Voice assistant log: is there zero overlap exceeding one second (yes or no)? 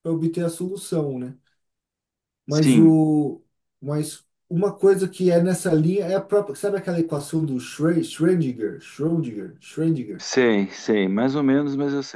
yes